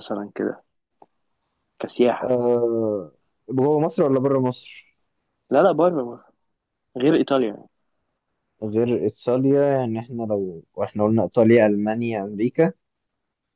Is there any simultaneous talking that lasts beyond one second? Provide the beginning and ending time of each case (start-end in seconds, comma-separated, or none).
none